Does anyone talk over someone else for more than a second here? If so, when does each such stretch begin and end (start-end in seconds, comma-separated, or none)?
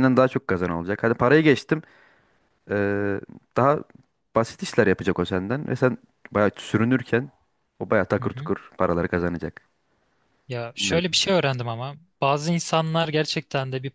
none